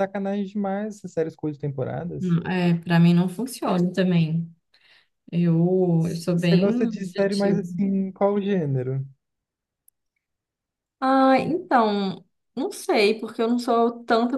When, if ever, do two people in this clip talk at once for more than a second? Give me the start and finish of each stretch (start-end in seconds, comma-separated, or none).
6.0-7.6